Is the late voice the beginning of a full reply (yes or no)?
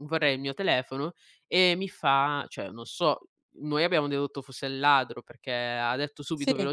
no